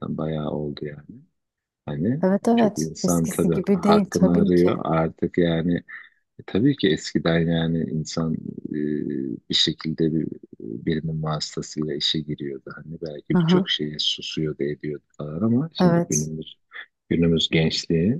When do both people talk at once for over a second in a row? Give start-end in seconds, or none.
2.2-4.7